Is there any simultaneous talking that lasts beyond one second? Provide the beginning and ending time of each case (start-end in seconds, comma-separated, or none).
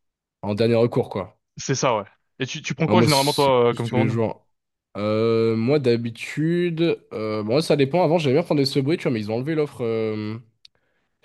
2.9-4.2